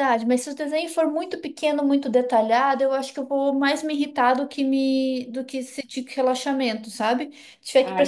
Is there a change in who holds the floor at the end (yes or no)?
no